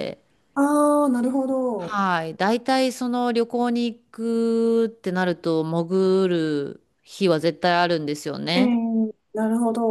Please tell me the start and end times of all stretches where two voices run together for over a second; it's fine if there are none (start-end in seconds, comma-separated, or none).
none